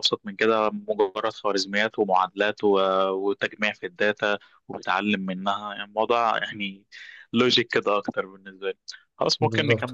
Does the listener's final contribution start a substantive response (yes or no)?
no